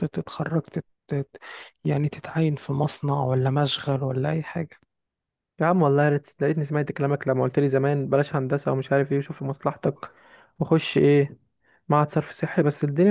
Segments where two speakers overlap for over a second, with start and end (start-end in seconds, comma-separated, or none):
none